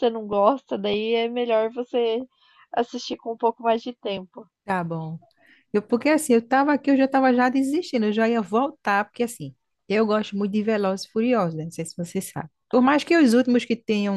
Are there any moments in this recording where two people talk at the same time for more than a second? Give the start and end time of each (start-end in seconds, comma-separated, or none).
none